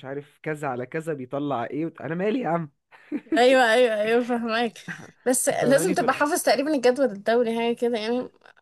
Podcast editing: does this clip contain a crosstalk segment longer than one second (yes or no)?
no